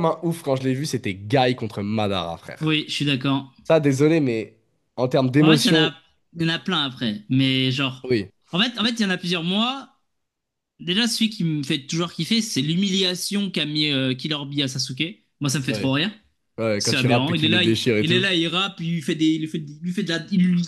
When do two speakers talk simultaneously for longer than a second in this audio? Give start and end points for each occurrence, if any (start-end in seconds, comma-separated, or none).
16.8-18.3